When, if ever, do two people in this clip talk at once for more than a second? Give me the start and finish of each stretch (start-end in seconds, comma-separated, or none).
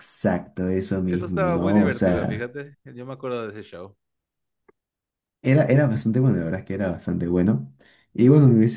1.1-2.5